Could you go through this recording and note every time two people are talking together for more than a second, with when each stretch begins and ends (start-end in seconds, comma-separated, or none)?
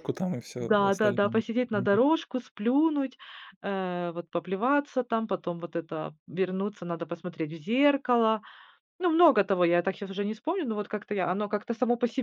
0.6-2.0